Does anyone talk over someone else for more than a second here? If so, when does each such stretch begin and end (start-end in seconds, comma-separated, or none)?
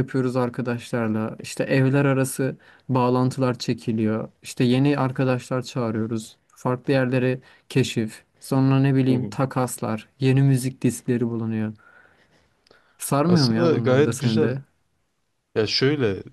13.3-14.6